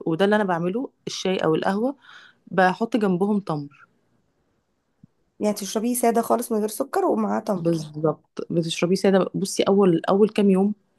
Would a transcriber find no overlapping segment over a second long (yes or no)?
yes